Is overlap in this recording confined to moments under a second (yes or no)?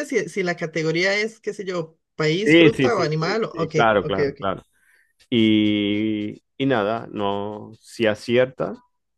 no